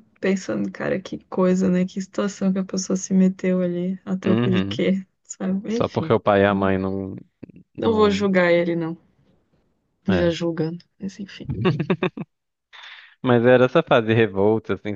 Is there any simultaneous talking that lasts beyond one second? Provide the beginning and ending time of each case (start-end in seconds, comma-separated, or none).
none